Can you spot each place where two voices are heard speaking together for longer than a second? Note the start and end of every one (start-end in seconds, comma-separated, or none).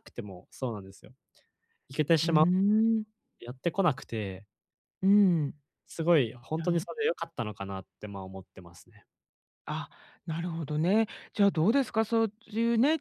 none